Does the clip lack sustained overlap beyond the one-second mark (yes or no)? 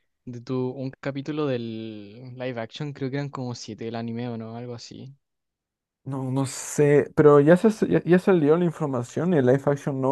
yes